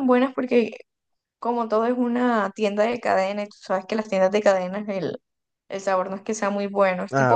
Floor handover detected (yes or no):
yes